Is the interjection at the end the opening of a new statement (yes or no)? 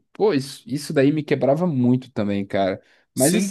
yes